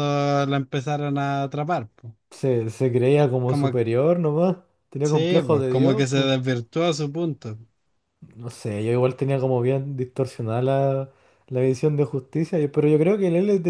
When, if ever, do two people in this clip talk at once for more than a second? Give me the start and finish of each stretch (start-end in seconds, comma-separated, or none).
5.0-6.3